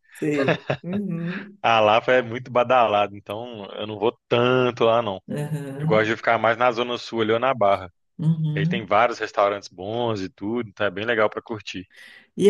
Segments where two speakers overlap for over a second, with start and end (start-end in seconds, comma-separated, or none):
none